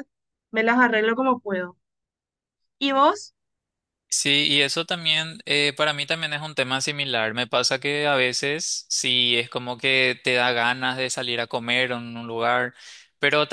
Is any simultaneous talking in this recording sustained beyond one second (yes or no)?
no